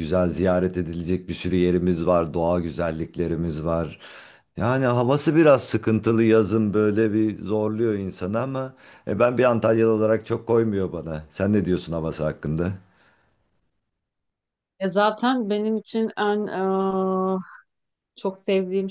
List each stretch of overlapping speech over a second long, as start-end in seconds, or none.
none